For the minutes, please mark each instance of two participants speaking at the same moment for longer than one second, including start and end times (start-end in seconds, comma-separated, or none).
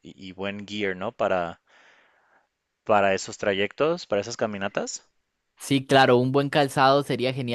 none